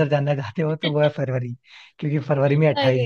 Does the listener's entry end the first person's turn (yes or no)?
no